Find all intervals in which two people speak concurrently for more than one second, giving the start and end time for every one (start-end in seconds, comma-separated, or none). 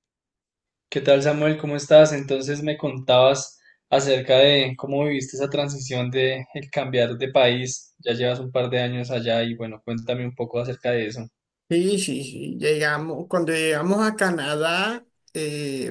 none